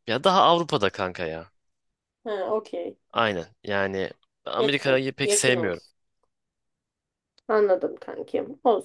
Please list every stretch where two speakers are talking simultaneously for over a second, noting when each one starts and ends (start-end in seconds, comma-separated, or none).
4.6-5.8